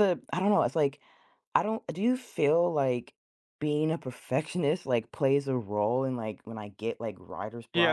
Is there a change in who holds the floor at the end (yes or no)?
yes